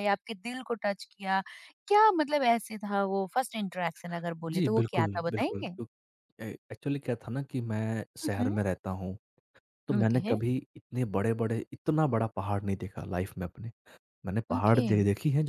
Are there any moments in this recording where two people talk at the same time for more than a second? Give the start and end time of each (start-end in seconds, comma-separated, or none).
4.5-5.7